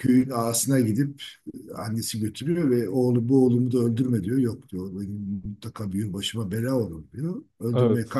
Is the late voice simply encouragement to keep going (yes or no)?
yes